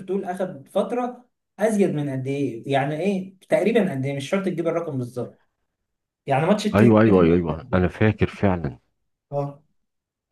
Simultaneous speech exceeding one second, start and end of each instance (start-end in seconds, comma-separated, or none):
6.7-8.0